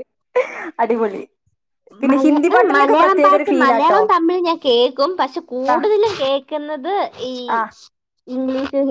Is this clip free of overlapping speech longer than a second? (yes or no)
no